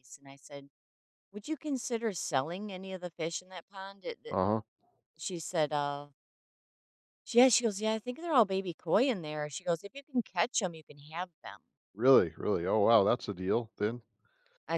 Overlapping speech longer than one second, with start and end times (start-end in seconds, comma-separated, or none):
none